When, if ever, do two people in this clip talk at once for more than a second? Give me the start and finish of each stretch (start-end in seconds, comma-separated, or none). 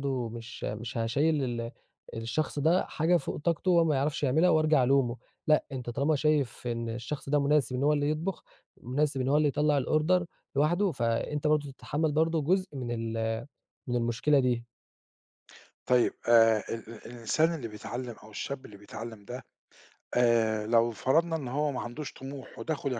none